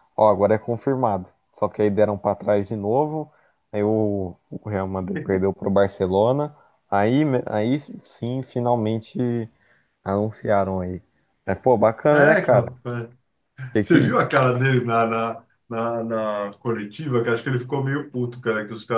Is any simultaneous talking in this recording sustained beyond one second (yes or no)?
no